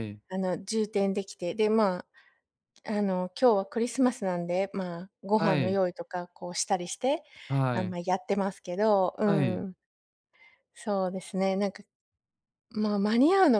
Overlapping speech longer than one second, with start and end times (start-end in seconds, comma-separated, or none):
none